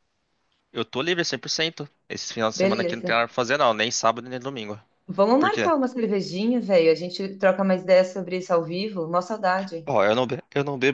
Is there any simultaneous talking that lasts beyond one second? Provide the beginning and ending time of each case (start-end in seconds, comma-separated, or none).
none